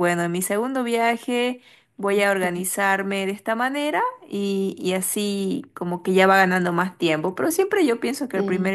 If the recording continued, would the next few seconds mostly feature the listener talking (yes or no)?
no